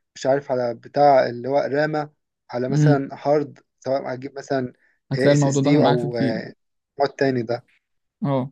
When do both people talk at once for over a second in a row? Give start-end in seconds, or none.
5.2-6.4